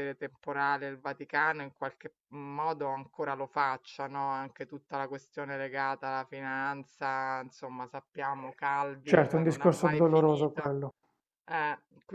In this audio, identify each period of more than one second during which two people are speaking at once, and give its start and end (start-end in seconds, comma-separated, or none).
9.0-10.8